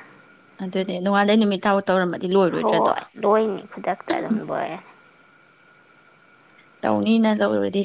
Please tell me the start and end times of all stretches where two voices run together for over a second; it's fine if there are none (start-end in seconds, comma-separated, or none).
none